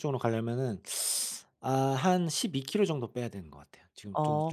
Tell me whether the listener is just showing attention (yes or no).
no